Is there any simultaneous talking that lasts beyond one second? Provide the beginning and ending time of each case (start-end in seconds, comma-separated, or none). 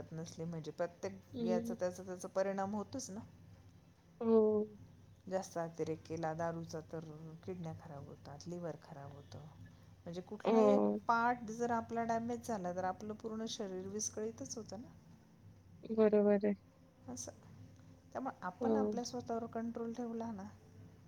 none